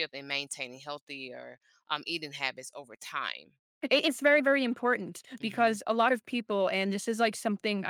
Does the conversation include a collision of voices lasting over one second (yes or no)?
no